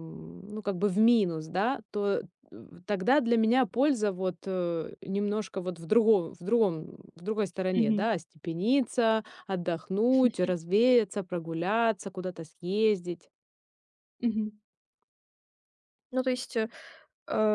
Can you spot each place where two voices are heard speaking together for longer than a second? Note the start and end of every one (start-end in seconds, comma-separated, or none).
none